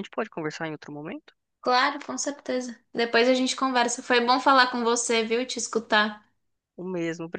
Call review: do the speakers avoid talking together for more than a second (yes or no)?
yes